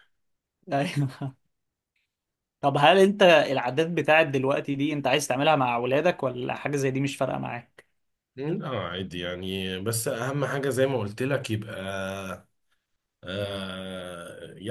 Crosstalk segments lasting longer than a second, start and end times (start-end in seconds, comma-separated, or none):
none